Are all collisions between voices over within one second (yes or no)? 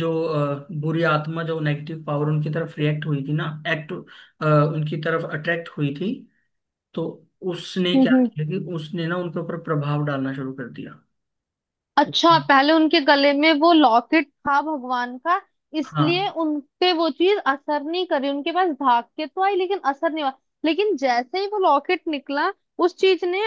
yes